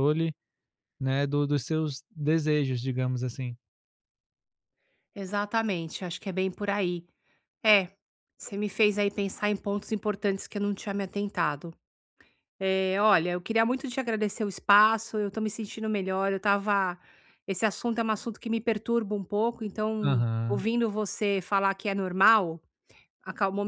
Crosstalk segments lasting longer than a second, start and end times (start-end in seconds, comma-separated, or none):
none